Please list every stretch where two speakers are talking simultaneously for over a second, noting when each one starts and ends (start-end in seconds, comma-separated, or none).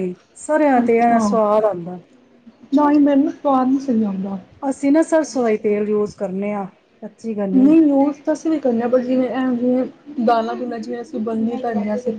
none